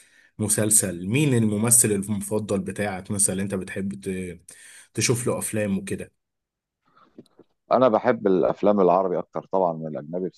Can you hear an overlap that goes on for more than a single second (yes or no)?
no